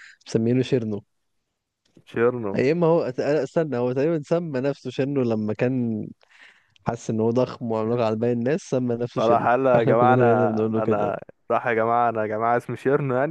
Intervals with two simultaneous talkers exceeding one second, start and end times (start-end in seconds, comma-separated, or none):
9.2-11.2